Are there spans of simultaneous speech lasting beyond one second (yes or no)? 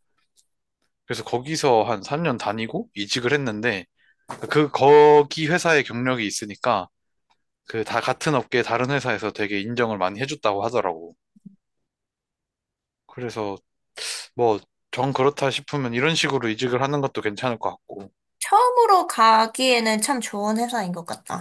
no